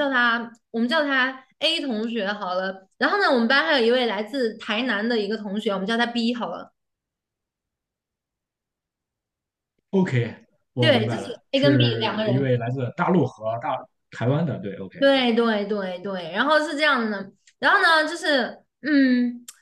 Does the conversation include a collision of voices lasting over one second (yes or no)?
yes